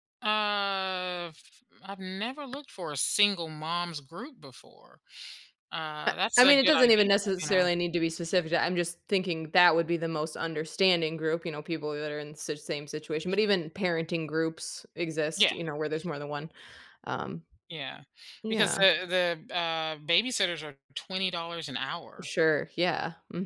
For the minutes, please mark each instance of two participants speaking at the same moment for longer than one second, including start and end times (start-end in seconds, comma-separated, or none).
6.1-7.7